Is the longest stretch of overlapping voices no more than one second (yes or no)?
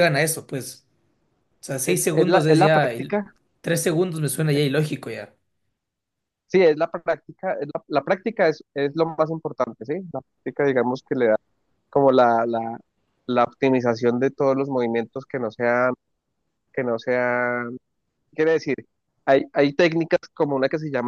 no